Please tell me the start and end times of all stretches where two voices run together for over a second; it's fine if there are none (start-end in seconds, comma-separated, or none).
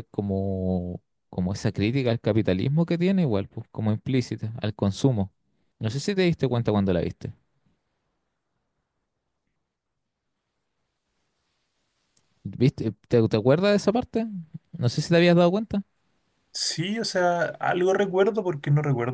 none